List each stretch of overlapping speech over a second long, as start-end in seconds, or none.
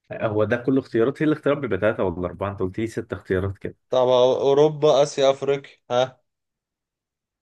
none